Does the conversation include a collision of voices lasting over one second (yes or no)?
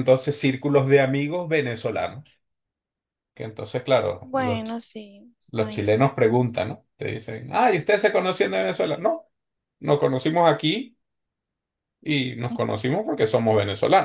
no